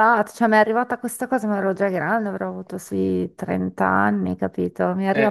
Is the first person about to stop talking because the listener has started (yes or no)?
no